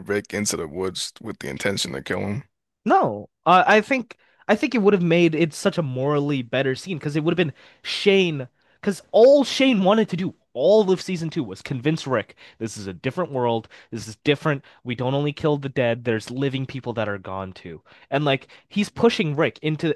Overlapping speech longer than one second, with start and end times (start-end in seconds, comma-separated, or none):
none